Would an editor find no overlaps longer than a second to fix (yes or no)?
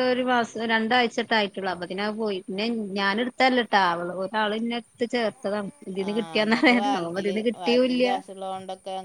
no